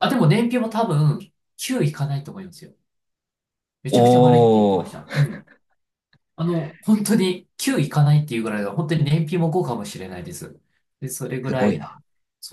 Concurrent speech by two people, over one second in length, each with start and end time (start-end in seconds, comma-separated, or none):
3.9-5.3